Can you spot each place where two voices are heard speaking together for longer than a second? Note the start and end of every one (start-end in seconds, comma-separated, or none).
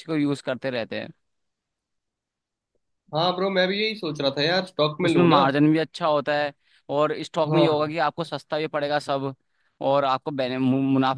none